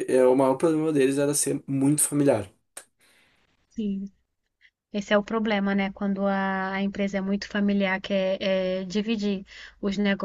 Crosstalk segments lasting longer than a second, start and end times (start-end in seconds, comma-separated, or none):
none